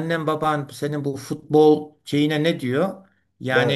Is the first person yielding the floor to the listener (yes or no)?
no